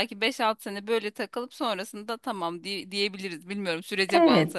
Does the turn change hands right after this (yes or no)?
yes